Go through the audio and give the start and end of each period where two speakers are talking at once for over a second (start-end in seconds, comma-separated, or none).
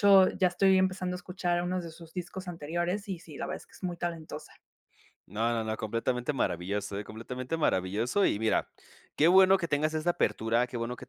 none